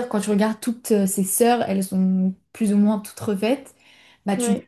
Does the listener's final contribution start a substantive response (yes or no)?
no